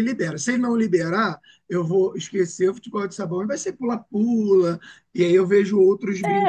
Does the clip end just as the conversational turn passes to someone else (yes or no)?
yes